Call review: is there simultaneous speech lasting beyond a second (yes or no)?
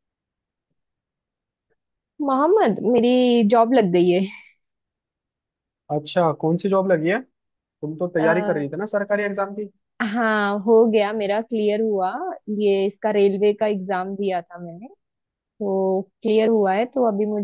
no